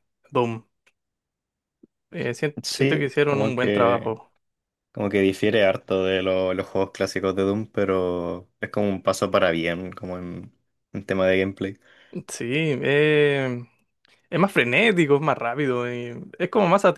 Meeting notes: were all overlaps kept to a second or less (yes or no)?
no